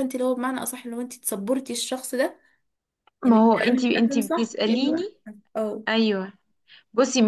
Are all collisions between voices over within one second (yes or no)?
no